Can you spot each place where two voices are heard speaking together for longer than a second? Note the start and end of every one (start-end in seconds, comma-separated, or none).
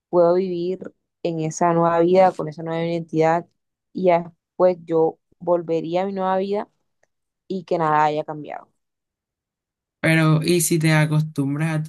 none